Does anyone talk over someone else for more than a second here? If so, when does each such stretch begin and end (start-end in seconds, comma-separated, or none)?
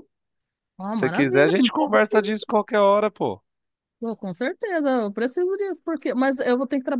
0.9-2.5